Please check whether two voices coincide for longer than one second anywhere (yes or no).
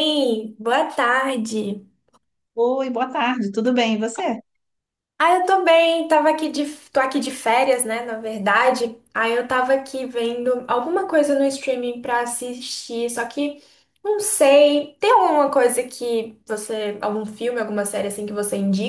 no